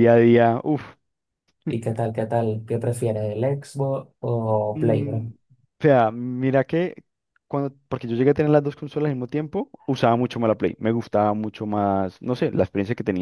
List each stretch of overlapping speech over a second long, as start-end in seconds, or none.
none